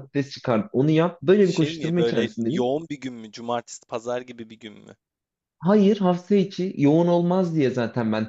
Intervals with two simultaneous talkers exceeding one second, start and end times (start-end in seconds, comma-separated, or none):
1.4-2.7